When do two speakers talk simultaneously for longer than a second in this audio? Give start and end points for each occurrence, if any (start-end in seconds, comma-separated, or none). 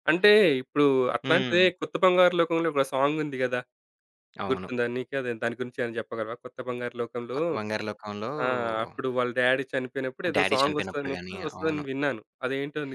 10.3-11.8